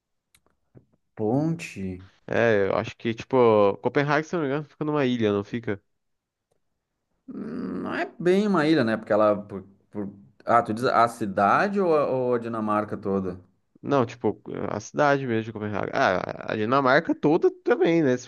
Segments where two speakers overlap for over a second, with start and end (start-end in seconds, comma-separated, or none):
none